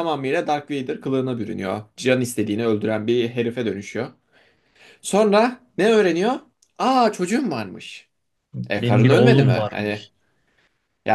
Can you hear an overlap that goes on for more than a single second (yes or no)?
yes